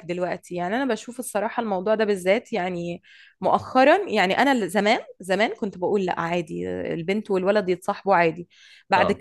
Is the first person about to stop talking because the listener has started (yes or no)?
no